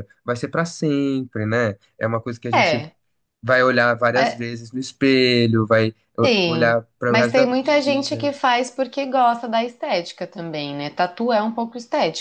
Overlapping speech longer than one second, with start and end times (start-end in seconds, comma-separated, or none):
6.2-8.3